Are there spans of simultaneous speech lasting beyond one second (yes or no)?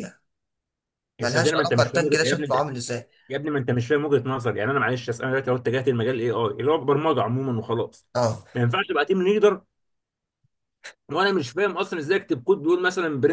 yes